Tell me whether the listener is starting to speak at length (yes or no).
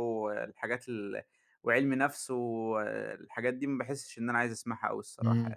yes